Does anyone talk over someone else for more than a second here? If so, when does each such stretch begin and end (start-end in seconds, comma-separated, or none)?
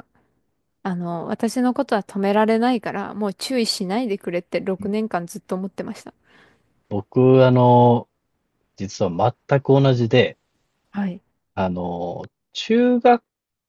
none